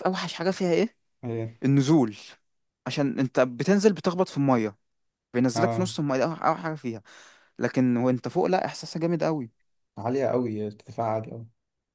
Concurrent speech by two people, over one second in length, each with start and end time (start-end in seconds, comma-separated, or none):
none